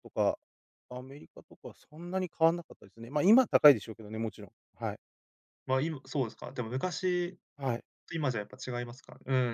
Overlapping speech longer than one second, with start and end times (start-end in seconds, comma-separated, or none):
none